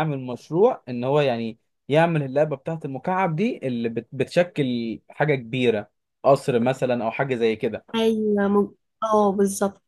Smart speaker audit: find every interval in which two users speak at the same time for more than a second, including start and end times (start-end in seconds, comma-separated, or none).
none